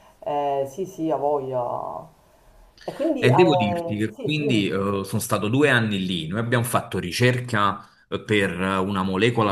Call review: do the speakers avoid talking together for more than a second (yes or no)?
no